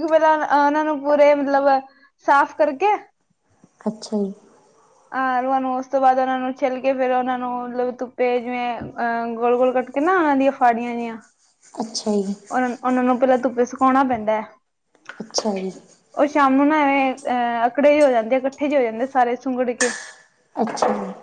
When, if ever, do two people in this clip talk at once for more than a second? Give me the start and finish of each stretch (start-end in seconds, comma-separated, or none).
none